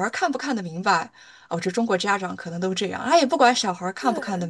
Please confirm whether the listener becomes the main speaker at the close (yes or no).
no